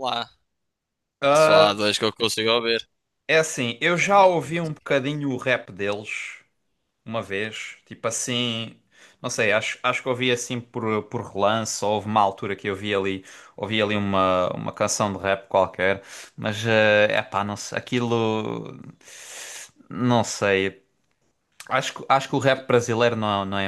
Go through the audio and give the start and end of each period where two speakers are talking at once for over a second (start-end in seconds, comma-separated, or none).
3.8-5.1